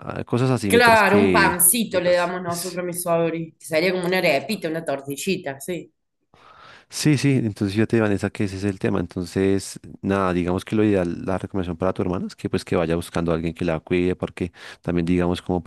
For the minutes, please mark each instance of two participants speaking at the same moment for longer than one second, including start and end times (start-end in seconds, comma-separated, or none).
0.7-2.3